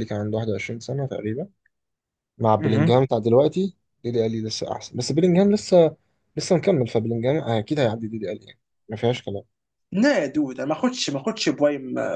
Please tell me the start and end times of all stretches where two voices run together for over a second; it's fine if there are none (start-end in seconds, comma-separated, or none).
none